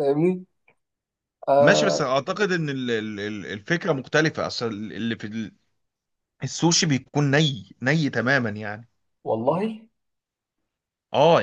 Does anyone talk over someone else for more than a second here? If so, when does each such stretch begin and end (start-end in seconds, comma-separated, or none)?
none